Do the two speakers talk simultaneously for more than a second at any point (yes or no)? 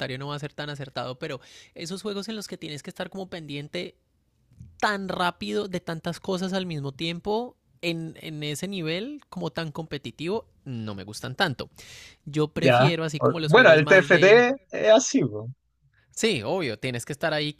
yes